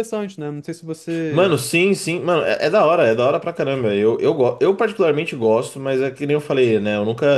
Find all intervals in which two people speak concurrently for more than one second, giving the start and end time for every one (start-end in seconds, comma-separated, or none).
none